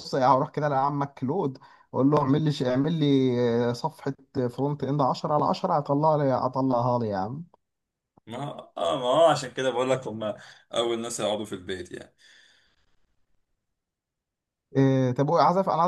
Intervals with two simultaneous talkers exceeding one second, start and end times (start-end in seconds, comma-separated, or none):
none